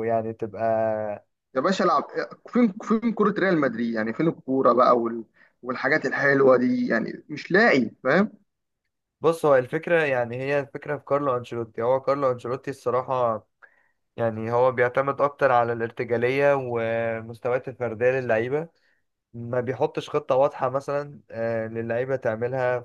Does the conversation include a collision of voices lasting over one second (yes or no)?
no